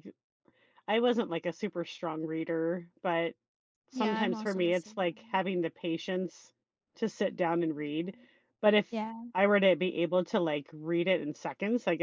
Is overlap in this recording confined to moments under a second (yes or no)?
no